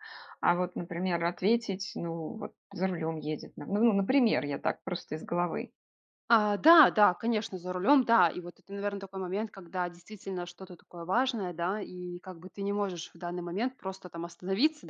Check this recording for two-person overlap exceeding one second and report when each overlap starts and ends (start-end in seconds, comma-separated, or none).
none